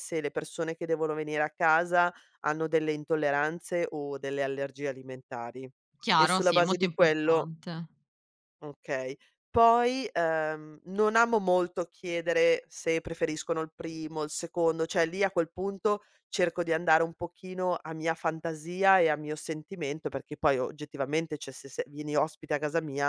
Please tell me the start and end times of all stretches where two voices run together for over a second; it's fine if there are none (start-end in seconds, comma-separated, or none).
6.2-7.5